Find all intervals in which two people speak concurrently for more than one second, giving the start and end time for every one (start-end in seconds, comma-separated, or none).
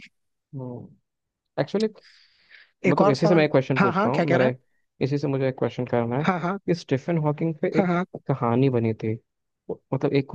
2.9-4.6